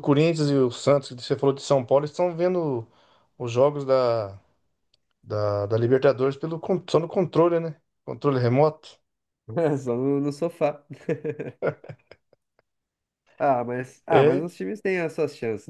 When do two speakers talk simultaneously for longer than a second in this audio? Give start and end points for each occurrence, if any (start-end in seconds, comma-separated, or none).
none